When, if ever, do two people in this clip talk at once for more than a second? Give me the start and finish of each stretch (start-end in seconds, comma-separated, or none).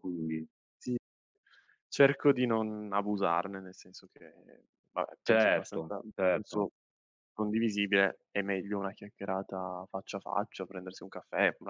5.2-6.6